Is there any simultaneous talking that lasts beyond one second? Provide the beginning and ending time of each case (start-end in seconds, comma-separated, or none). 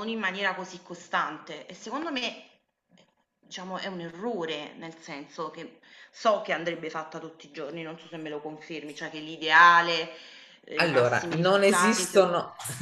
10.7-12.2